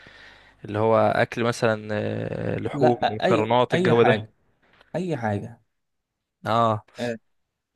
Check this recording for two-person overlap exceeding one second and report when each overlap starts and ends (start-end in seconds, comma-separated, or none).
2.7-4.2